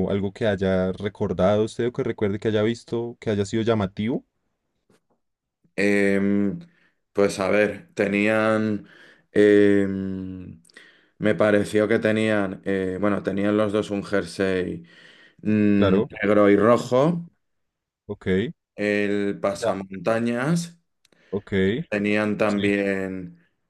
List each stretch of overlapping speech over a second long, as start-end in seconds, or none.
none